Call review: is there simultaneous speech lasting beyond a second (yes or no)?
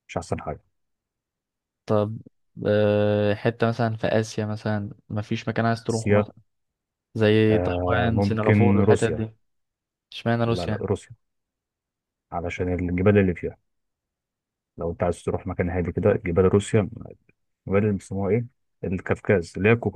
yes